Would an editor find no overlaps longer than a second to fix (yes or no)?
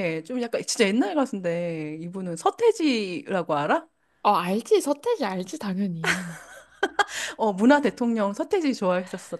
yes